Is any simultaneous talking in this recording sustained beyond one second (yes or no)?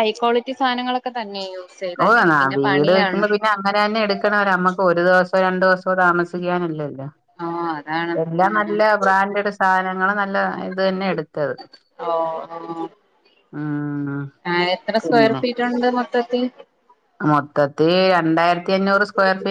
no